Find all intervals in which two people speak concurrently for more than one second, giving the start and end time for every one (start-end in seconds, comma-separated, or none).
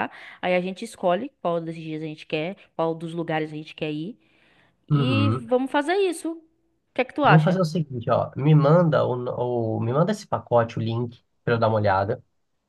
none